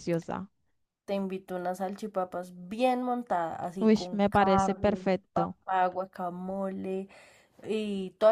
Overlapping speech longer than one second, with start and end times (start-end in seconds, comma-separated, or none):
3.8-5.6